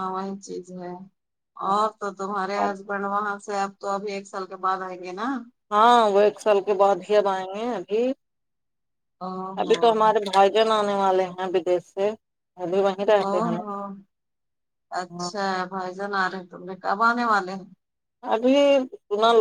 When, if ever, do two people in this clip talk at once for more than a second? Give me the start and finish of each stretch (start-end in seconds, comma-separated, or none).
none